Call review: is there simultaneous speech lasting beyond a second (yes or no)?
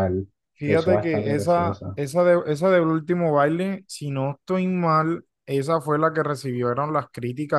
yes